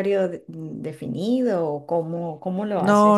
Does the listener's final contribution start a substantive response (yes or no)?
yes